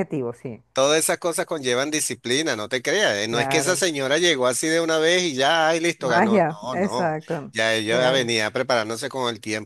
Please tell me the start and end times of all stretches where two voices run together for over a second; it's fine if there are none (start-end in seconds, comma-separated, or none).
6.0-8.3